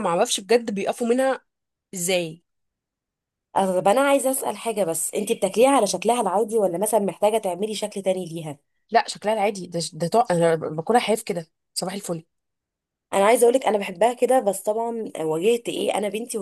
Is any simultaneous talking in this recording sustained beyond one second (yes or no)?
no